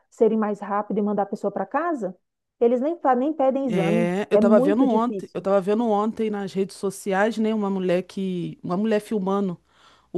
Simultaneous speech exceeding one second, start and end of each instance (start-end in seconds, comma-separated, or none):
3.7-5.3